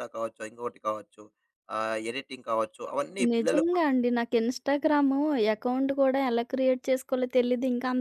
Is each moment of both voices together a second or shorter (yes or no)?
yes